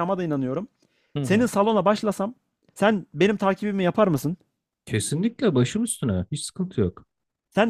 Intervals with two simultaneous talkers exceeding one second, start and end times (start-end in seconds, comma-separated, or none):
none